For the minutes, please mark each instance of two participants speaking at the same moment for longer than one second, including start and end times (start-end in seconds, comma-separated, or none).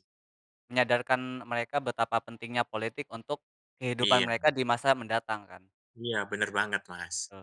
none